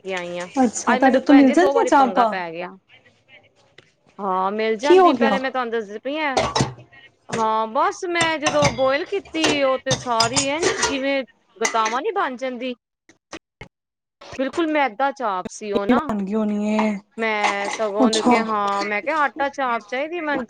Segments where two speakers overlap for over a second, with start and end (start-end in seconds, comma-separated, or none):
0.9-2.3